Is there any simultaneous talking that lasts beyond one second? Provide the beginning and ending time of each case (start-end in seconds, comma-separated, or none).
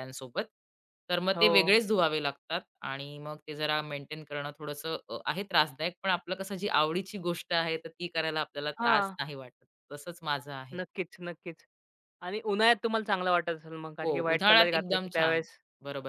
14.0-15.4